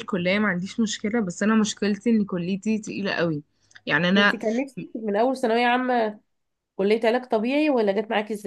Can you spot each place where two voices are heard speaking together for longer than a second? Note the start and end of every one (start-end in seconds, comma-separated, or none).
none